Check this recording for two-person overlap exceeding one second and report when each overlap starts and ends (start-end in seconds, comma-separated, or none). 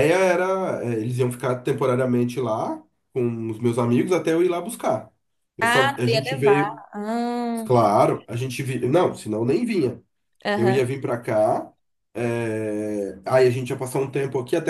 5.6-6.8